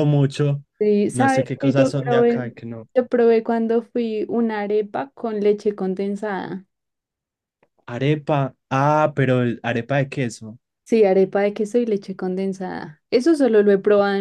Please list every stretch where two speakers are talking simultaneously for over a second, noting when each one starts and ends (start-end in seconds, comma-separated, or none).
1.1-2.5